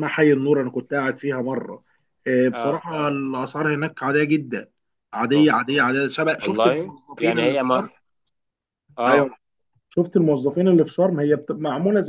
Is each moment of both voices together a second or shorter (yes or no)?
no